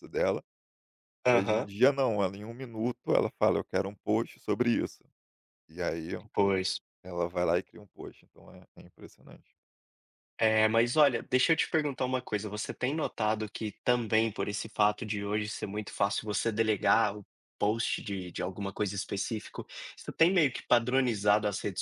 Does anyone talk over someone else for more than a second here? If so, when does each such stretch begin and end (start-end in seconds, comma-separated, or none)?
none